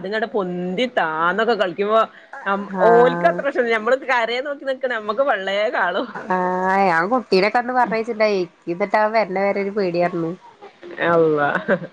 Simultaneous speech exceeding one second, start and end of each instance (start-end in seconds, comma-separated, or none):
none